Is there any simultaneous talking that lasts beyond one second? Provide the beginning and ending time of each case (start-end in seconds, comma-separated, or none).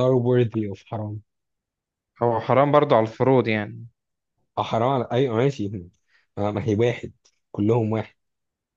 none